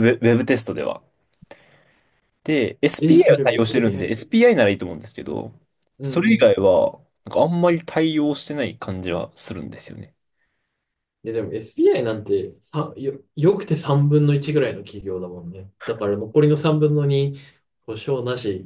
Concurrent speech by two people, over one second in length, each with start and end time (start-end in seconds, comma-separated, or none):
3.0-4.2